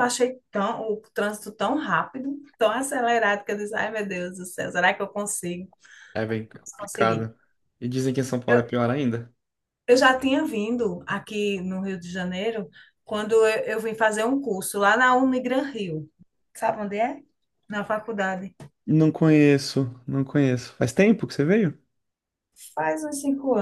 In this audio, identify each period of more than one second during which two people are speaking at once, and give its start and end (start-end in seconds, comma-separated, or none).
none